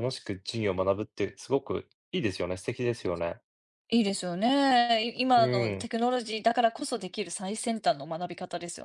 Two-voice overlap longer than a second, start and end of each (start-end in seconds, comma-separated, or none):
none